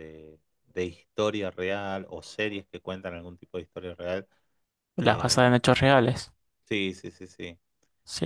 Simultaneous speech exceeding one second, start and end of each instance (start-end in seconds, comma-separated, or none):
none